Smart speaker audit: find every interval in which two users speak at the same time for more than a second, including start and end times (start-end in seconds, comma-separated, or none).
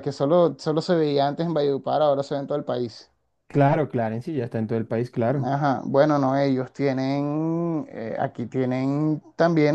none